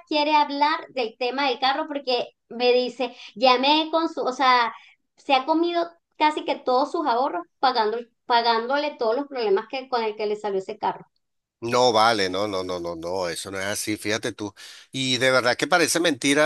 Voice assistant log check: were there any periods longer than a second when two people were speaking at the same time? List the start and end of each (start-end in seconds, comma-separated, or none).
none